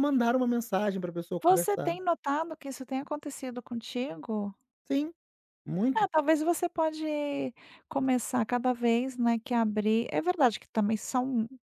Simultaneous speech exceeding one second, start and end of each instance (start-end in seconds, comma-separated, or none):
none